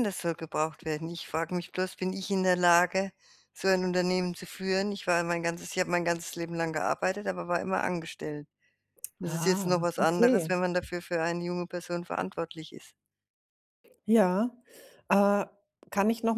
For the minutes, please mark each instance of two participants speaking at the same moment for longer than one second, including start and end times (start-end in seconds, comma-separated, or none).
9.2-10.5